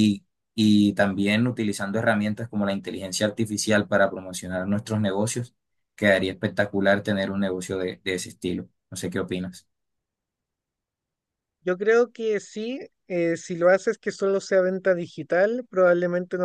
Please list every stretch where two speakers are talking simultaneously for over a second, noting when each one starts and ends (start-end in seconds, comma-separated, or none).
none